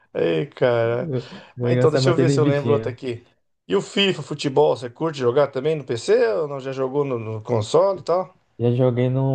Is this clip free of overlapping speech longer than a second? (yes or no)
no